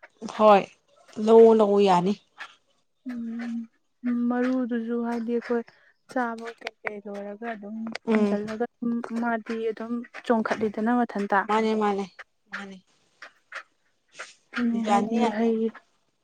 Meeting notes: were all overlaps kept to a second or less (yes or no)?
yes